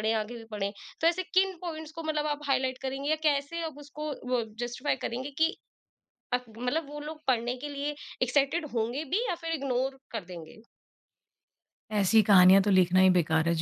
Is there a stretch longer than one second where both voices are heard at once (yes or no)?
no